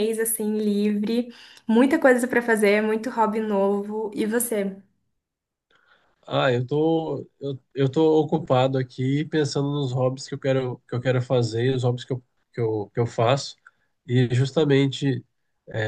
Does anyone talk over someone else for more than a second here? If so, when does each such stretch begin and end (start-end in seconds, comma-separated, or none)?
none